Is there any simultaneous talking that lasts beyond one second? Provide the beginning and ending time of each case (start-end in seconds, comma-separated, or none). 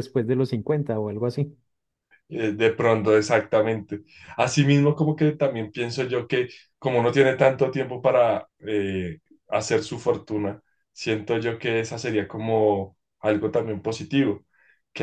none